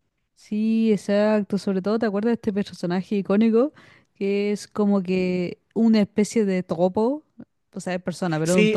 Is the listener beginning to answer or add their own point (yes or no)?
yes